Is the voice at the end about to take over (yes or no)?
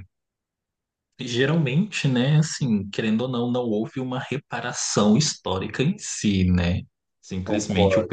no